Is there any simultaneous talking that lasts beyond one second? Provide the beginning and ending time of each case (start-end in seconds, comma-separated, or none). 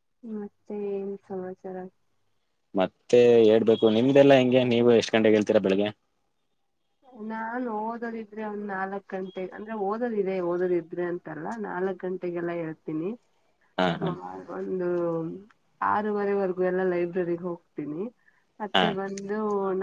none